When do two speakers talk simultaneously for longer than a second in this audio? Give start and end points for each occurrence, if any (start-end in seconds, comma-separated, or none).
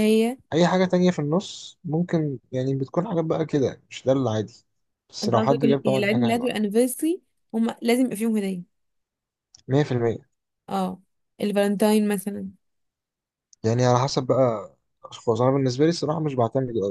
5.2-6.5